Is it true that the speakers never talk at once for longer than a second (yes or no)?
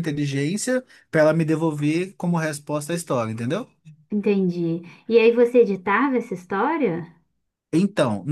yes